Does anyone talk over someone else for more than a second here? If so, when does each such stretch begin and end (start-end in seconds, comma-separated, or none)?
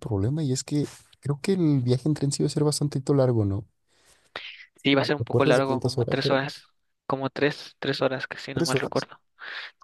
5.2-6.4